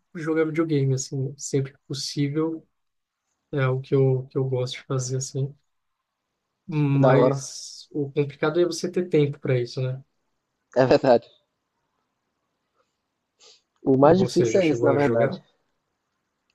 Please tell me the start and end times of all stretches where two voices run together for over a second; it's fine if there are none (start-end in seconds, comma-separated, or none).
14.0-15.4